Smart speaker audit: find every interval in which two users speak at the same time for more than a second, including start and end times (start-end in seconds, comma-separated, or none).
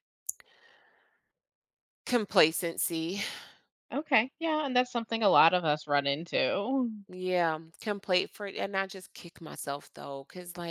none